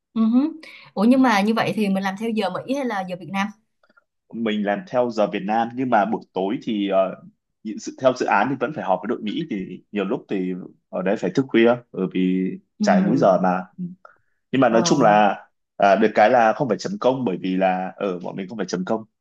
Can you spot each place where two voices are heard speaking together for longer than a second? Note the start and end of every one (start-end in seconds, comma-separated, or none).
none